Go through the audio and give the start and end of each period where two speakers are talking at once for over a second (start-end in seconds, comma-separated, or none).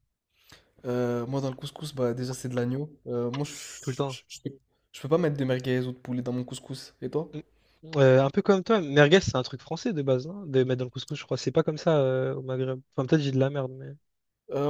none